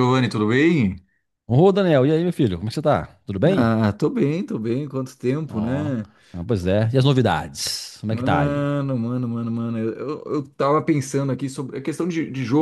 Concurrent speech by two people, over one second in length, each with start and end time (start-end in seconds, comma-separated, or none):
none